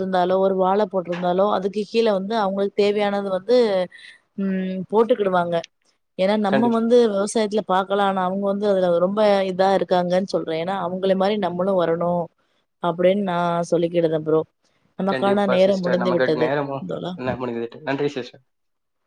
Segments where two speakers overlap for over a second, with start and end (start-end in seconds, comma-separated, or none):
15.1-16.5